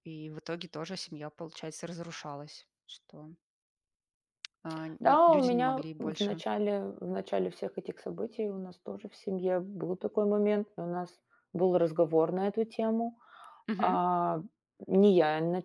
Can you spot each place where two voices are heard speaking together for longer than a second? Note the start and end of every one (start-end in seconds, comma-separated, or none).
5.0-6.4